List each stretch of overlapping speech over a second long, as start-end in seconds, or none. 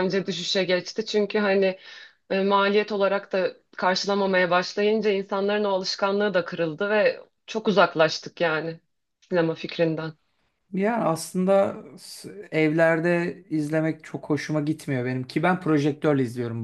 none